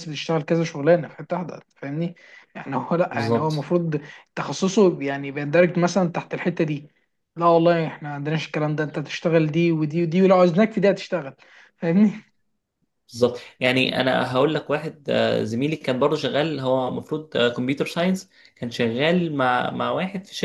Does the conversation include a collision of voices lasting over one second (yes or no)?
no